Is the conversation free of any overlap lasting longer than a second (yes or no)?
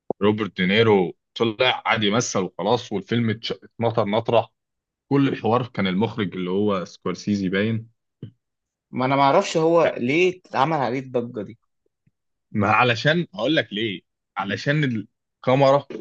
yes